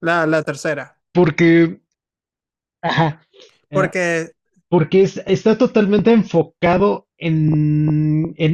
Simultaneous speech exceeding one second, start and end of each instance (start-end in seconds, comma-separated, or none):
none